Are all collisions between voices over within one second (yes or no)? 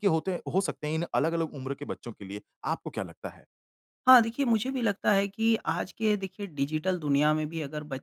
yes